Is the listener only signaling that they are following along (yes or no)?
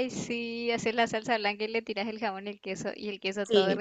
no